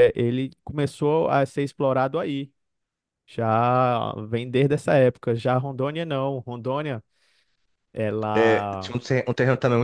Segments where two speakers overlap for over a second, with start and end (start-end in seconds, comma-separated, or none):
none